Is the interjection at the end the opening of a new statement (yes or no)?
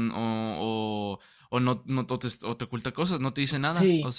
yes